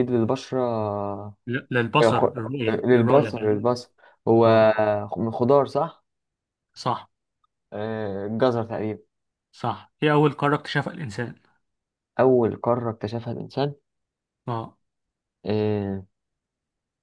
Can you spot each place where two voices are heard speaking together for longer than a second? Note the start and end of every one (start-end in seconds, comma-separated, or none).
2.0-3.6